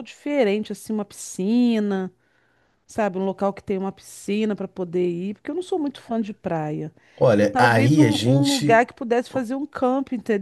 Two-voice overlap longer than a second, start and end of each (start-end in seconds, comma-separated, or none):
7.4-8.8